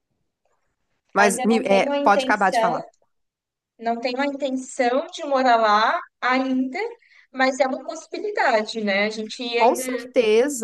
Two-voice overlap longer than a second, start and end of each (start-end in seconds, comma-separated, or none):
1.1-2.8